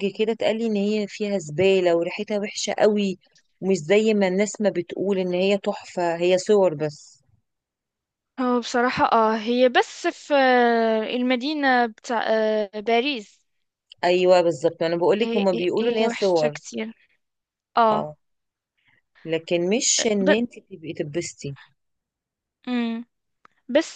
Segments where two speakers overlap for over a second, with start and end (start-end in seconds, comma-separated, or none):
15.2-16.6